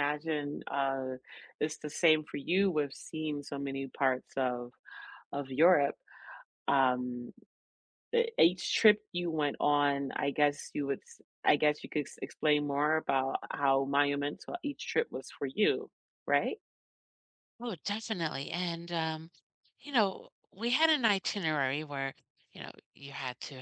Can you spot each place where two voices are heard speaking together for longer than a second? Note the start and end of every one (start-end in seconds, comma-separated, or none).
none